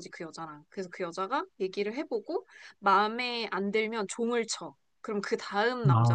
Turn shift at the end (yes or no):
yes